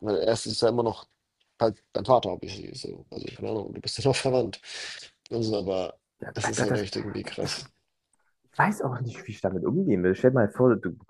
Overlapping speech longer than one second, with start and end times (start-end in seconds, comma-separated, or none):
none